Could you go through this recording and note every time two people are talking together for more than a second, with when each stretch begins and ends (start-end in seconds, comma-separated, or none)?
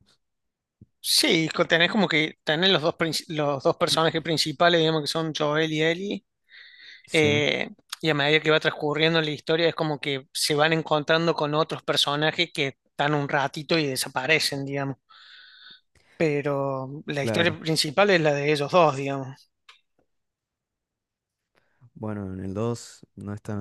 none